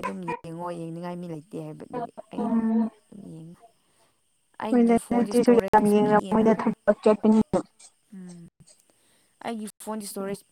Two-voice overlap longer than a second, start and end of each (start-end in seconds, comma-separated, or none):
4.7-6.5